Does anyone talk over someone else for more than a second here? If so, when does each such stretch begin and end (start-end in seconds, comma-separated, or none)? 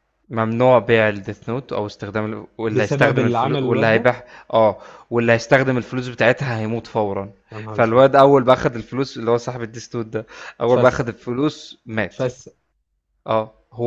2.7-4.1